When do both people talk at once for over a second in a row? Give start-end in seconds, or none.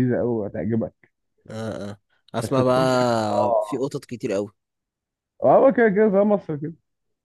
2.4-3.9